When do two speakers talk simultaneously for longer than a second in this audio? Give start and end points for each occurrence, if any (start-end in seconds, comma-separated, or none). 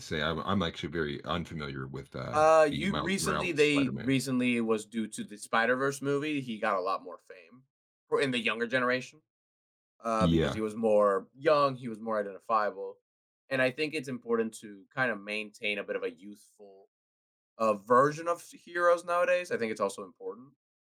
2.3-4.1